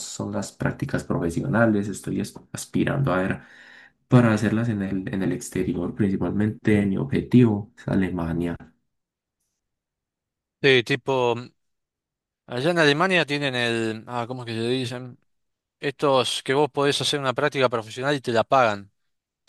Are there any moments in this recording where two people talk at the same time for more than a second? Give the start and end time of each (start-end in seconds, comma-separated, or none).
none